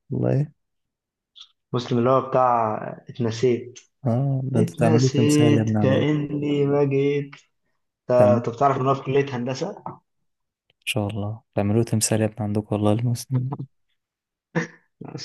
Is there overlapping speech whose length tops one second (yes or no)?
yes